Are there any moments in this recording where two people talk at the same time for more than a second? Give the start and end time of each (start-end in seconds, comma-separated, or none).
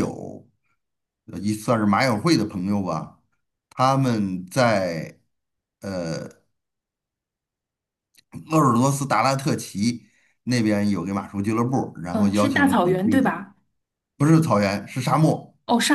12.1-13.3